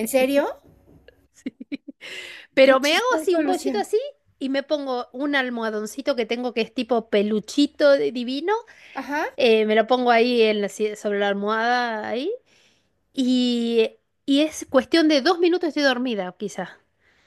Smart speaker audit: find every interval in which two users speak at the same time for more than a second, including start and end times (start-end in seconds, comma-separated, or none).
2.6-3.9